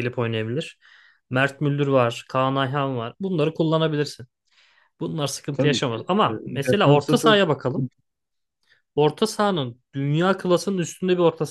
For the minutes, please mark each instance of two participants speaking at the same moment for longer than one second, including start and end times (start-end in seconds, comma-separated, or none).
5.5-7.9